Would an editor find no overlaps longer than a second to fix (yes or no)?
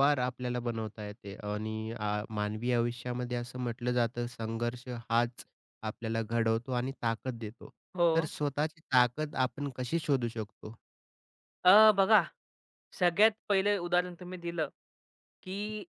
yes